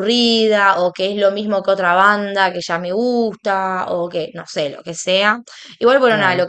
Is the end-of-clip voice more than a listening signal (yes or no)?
no